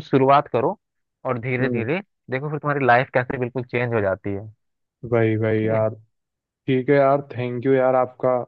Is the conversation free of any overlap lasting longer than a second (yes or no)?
yes